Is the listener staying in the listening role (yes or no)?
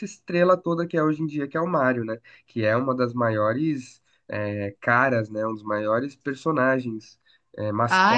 no